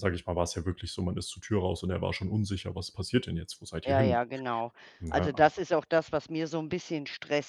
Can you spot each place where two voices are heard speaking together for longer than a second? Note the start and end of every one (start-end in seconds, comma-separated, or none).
none